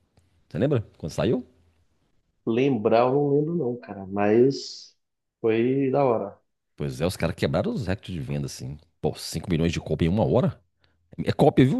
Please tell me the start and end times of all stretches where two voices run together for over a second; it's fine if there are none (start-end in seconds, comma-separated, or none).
none